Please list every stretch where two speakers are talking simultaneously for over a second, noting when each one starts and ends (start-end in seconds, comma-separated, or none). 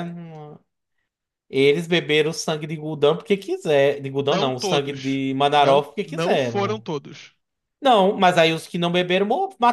4.3-6.9